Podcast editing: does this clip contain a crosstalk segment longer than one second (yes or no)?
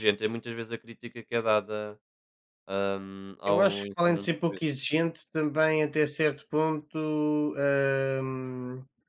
yes